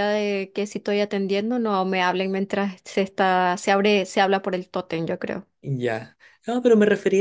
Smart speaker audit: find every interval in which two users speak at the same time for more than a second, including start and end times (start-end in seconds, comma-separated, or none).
none